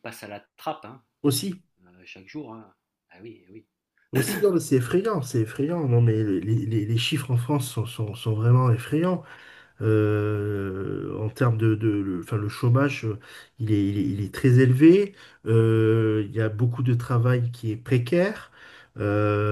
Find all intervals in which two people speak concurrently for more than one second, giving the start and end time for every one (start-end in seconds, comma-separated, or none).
none